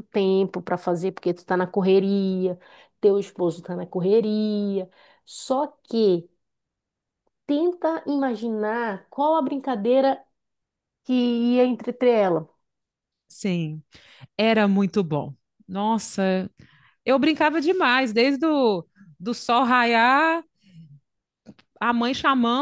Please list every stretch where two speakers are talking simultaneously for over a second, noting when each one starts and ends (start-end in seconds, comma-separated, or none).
none